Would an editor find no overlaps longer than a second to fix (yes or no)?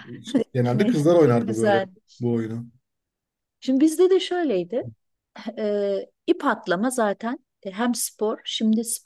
no